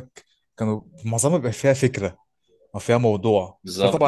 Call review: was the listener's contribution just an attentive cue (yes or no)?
yes